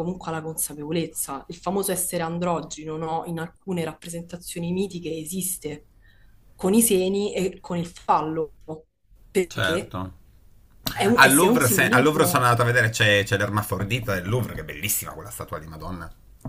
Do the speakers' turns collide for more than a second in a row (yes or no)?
yes